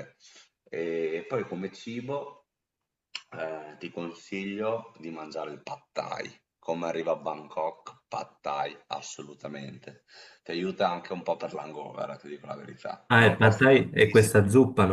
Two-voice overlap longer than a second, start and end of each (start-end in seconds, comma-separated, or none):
13.1-14.4